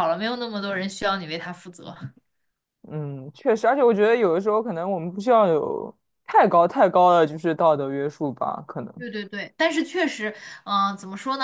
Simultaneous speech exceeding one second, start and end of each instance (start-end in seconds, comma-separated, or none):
none